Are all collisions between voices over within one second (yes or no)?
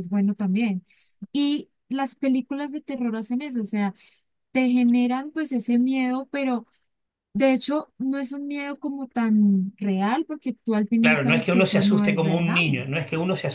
no